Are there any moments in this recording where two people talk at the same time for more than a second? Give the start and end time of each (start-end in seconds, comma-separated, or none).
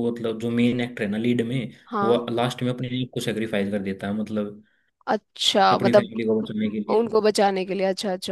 none